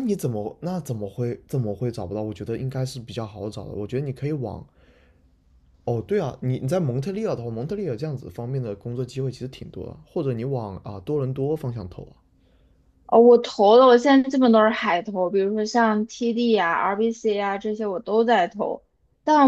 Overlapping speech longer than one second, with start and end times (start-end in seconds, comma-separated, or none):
none